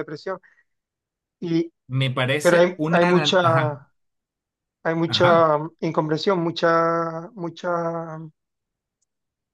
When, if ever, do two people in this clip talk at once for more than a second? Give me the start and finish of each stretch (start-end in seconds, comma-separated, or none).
2.4-3.8